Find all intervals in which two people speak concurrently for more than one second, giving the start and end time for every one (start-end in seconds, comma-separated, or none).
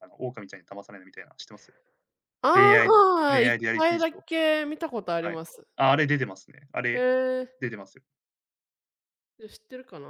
2.5-4.2